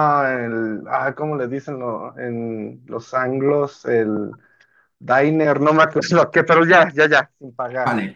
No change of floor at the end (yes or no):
no